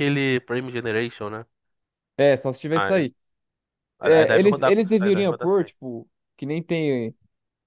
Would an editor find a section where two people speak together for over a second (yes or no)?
yes